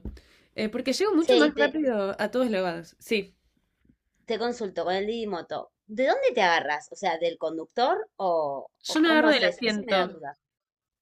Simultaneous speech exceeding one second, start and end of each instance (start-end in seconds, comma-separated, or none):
8.8-10.2